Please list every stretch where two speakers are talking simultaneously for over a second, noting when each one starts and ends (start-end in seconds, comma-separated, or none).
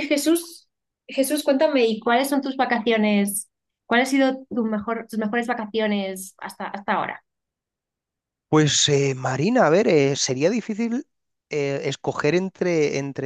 none